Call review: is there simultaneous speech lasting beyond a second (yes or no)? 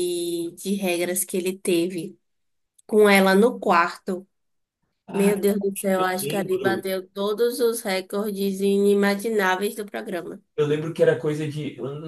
yes